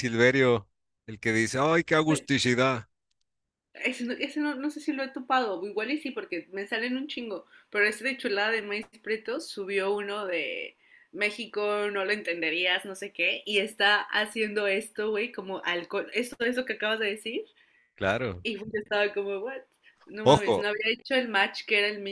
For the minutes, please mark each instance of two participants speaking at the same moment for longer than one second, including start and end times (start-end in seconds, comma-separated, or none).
none